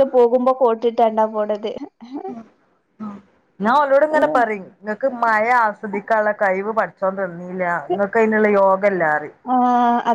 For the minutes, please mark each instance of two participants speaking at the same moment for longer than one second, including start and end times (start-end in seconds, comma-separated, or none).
none